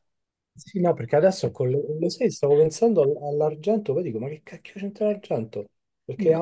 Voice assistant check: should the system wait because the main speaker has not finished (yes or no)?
yes